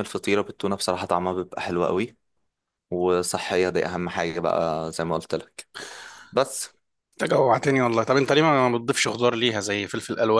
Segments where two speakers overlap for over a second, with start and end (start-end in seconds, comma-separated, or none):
none